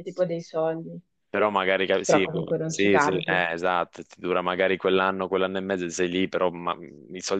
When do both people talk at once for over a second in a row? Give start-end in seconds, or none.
2.0-3.5